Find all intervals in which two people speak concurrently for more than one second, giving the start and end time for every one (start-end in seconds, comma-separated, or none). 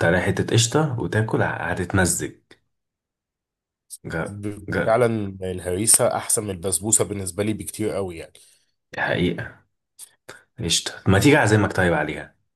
none